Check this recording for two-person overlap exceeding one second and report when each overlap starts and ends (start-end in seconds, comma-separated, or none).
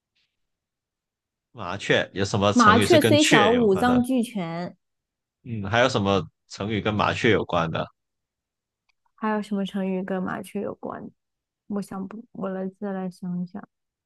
2.5-4.0